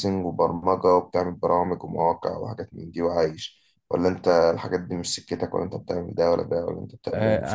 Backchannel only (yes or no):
no